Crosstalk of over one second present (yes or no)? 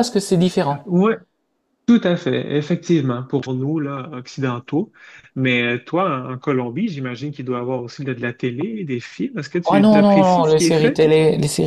yes